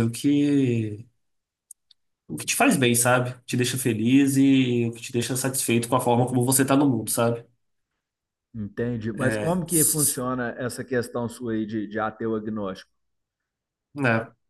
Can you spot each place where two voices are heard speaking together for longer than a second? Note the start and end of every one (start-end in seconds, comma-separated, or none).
none